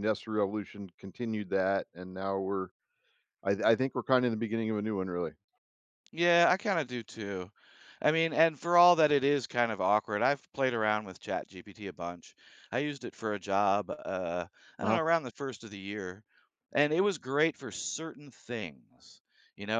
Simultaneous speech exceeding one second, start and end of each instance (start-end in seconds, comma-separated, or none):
none